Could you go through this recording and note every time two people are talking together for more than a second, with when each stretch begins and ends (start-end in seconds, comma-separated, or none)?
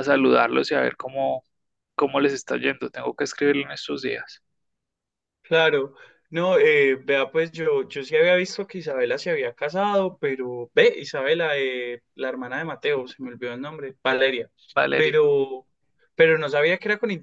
none